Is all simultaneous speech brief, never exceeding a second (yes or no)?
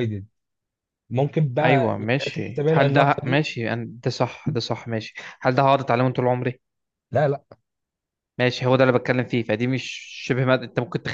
no